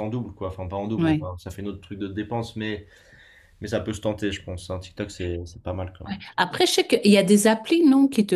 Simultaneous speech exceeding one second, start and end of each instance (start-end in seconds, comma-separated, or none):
none